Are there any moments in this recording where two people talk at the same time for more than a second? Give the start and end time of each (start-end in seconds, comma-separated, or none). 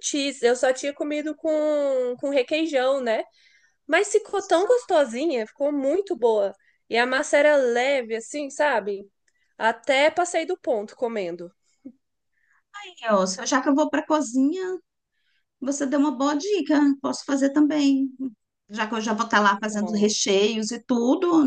none